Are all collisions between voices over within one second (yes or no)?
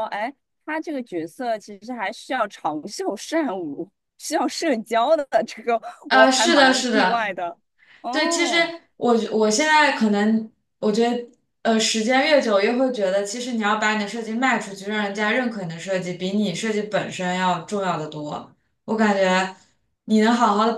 no